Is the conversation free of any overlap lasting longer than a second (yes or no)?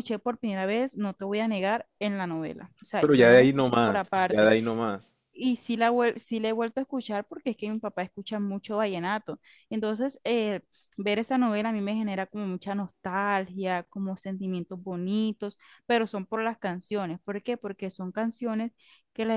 no